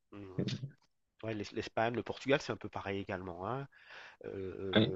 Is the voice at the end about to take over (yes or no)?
no